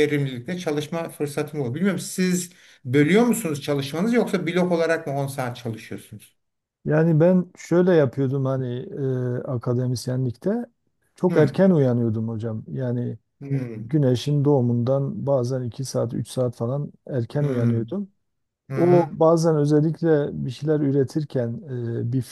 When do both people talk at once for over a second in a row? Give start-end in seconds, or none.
none